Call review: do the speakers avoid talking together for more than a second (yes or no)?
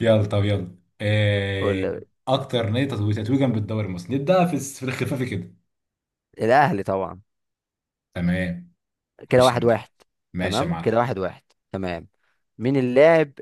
yes